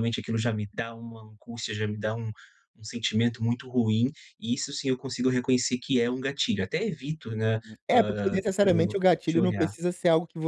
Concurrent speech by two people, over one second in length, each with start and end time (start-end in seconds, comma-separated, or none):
7.6-9.7